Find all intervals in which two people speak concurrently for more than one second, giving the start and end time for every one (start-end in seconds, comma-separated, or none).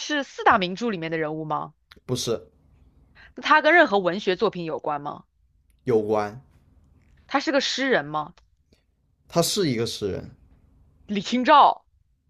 none